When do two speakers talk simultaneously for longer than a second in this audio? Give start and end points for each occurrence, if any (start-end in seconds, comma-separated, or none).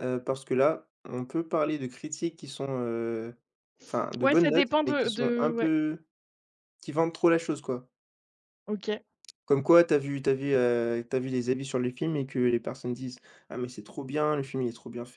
4.2-5.7